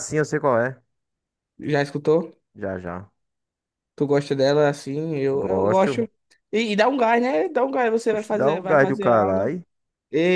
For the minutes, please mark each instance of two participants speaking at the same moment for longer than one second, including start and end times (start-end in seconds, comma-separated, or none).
8.1-9.5